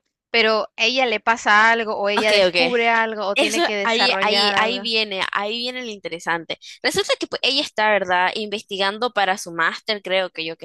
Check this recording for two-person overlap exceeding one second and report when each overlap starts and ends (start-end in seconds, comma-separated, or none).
3.3-4.9